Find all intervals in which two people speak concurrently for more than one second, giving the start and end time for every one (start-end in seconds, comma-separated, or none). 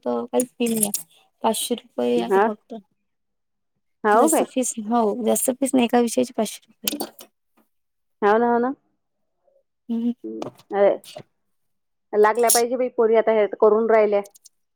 none